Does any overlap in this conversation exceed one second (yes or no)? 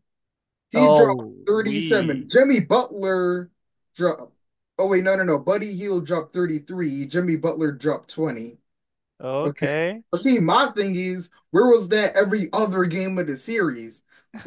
yes